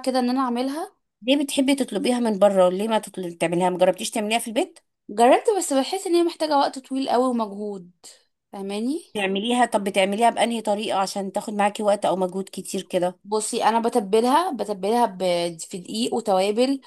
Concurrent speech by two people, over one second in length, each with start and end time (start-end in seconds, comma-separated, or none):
none